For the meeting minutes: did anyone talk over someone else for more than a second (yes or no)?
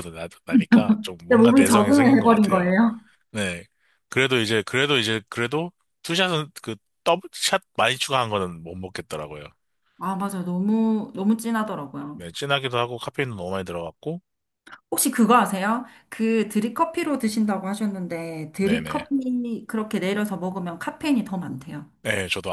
yes